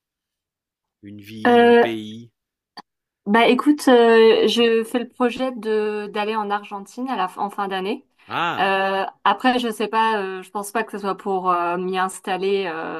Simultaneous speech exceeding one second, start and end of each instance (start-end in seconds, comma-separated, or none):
none